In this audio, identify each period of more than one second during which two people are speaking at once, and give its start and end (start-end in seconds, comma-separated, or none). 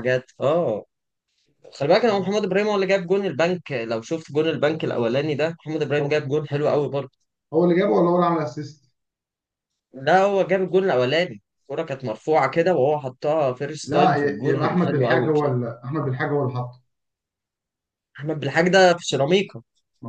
13.8-15.6